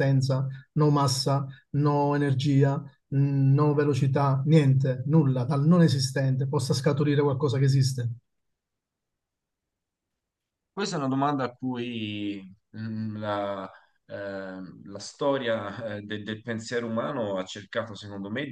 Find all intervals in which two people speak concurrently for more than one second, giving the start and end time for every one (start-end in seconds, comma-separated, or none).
none